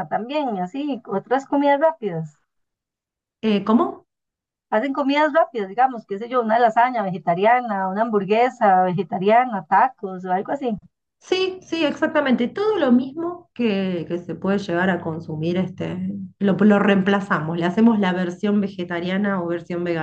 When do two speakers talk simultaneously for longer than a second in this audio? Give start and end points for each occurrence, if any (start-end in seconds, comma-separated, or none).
none